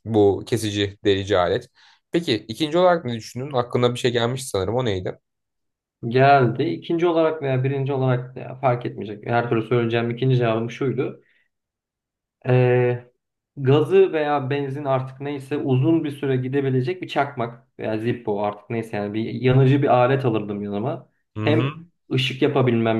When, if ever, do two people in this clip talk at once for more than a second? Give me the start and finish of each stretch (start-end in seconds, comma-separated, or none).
none